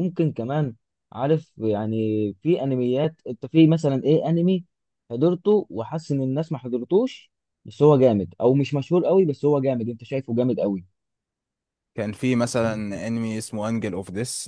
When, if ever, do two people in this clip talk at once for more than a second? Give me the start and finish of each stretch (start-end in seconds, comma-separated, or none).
none